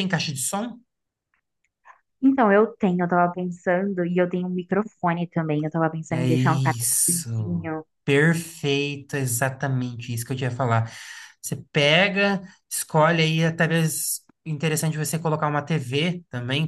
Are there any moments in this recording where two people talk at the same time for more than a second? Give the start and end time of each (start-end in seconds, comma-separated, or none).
6.1-7.8